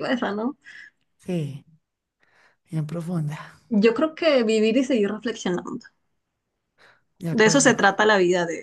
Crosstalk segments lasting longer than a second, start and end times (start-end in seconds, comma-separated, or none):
none